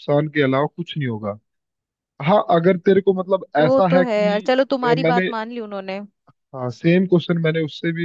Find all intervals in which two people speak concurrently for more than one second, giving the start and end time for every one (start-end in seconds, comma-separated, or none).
3.6-5.3